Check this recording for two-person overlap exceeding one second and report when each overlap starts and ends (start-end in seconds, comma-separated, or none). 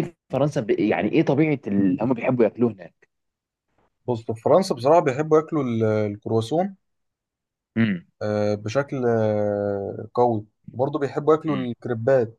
none